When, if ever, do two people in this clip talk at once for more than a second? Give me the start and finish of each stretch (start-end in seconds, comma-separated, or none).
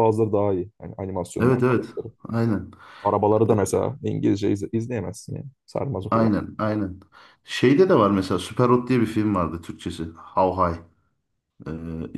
none